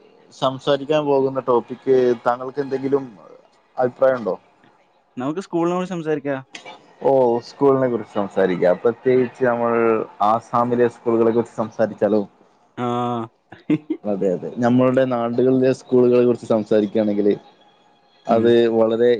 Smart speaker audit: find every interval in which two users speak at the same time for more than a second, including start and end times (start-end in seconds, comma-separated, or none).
none